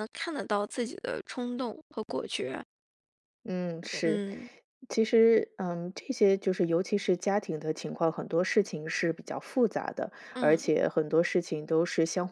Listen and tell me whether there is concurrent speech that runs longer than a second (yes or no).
no